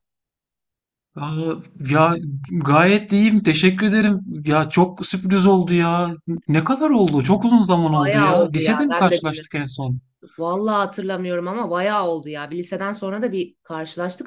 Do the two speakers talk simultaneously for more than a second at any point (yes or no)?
yes